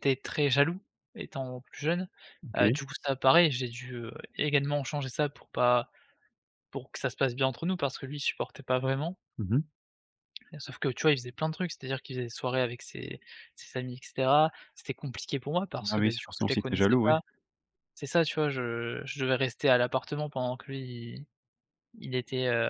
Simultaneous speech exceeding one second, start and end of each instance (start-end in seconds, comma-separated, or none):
15.8-17.2